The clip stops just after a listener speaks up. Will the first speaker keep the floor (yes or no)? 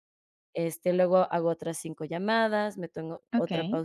no